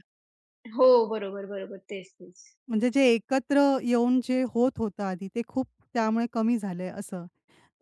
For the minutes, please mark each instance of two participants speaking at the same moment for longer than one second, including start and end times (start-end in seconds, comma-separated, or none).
none